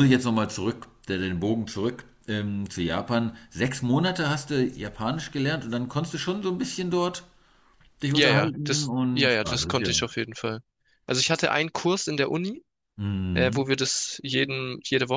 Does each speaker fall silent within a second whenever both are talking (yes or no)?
no